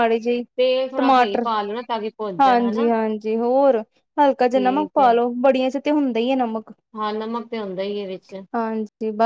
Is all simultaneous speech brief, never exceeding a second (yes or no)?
yes